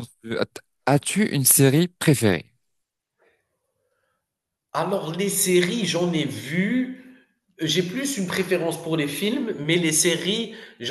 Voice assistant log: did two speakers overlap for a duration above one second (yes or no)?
no